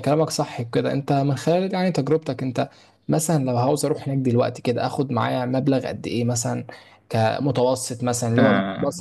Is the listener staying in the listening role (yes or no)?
yes